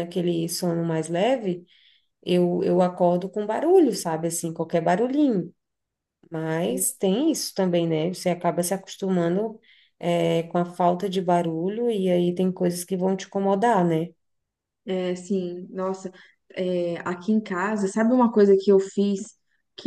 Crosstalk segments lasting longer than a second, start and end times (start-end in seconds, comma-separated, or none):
none